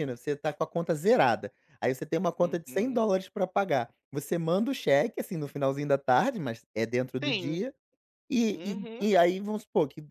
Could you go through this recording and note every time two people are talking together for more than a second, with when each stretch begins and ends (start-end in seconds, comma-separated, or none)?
none